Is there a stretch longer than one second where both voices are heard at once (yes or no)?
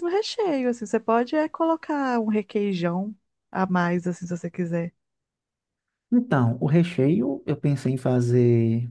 no